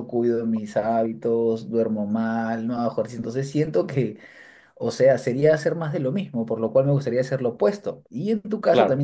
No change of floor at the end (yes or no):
yes